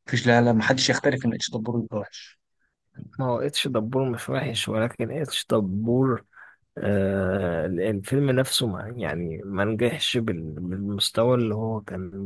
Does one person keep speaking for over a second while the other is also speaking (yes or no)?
no